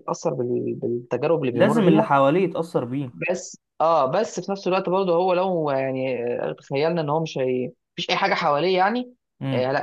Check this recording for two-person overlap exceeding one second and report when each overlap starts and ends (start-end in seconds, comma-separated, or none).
none